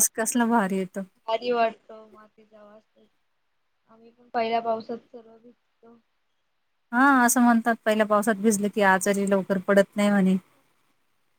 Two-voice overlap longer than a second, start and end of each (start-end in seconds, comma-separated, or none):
none